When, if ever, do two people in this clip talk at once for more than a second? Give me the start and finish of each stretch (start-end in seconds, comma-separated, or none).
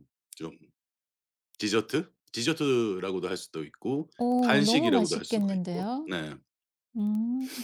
4.2-6.1